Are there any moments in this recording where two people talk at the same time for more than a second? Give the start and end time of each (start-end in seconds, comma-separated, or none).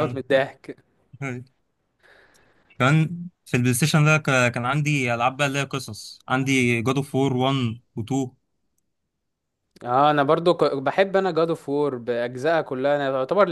none